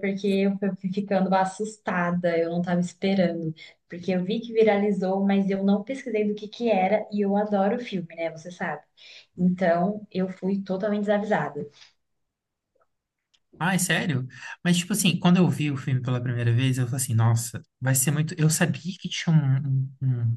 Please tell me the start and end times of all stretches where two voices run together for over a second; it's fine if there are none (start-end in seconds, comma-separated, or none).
none